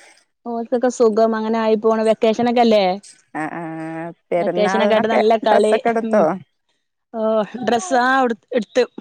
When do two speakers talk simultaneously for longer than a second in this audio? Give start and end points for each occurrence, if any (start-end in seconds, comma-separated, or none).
4.4-6.2